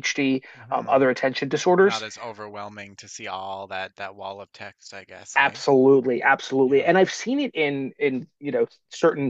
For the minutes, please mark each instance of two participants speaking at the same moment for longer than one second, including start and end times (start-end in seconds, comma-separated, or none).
none